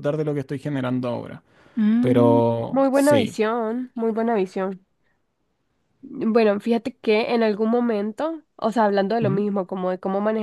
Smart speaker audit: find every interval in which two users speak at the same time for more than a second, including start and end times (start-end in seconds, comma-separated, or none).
2.0-3.4